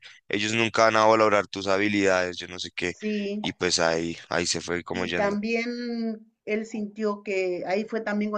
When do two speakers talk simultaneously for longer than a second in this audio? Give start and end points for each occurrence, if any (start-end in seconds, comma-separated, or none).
none